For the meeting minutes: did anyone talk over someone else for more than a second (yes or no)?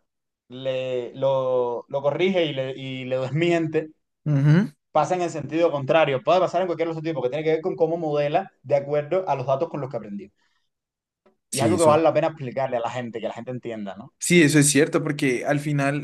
no